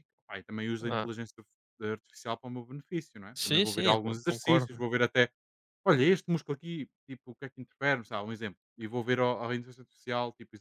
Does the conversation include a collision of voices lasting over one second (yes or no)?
yes